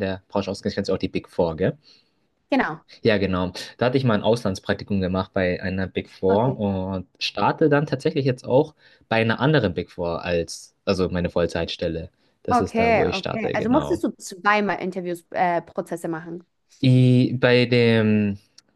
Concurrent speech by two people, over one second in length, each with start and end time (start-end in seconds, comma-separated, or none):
12.5-14.0